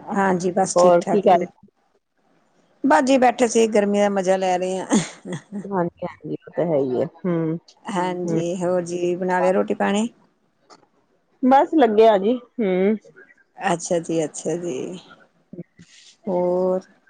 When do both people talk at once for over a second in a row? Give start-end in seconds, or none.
none